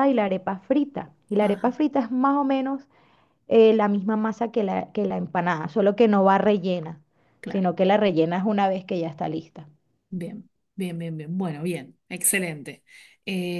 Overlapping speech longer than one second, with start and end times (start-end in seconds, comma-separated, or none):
none